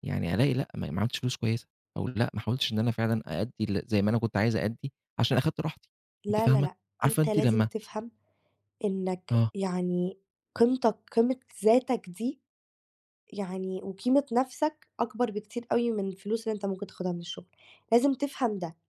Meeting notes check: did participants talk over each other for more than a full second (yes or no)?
yes